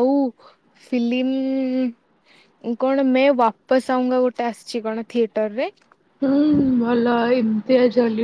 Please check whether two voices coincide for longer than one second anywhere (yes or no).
no